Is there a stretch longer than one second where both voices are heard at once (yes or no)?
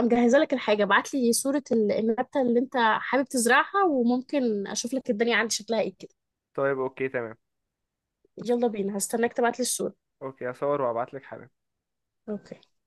no